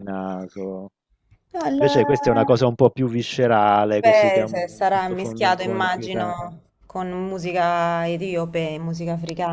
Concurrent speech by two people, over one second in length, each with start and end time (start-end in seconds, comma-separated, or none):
4.0-6.4